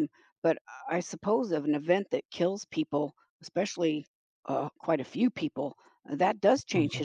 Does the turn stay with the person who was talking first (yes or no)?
yes